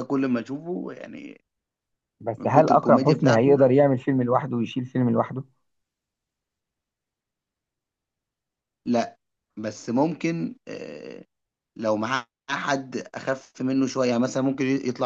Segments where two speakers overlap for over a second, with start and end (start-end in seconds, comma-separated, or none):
2.4-3.6